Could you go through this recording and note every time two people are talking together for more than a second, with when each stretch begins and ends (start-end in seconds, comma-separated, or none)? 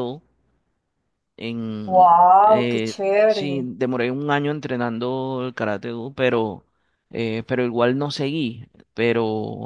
1.9-3.7